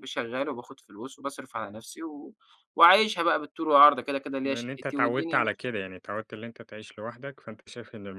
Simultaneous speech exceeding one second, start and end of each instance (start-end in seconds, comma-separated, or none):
4.4-5.7